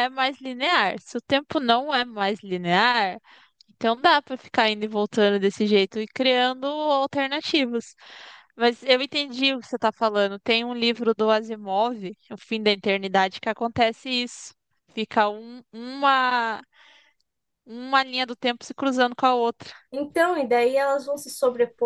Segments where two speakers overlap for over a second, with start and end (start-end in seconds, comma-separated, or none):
none